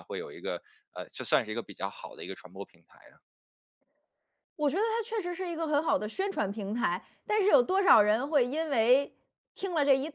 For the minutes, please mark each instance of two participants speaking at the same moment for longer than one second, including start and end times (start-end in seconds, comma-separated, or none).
none